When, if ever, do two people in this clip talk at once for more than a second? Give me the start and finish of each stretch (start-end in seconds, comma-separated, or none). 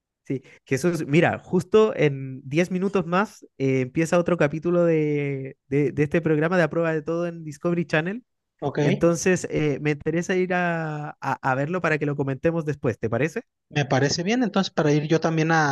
none